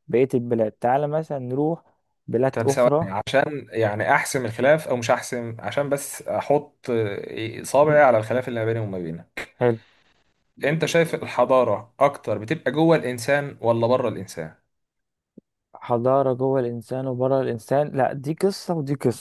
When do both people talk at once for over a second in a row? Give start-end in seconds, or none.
none